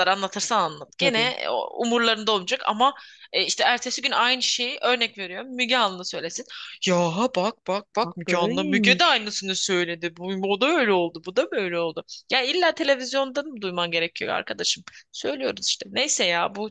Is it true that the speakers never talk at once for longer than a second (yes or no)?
no